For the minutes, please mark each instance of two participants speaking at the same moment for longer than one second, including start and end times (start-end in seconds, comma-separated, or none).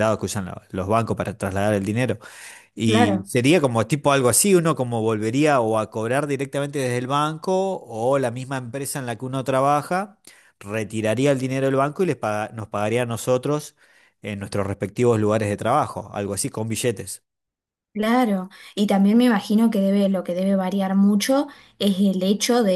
none